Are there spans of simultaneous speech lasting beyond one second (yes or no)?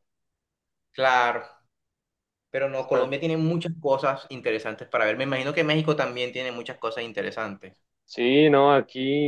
no